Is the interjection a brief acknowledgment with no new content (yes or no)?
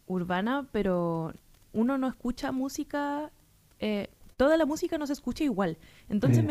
yes